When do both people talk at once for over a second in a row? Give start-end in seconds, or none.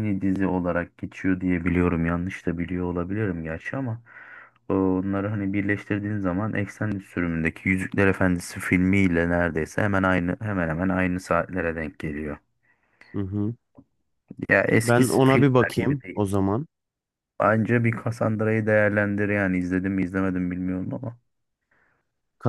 14.8-16.2